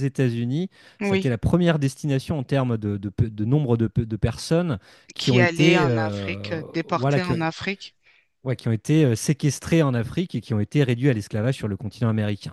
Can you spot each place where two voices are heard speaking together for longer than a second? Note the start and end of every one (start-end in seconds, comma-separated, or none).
5.2-7.4